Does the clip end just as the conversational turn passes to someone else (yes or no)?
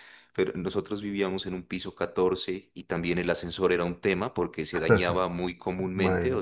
no